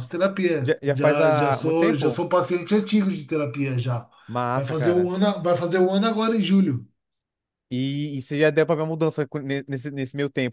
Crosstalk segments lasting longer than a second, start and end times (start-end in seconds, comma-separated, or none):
0.6-2.2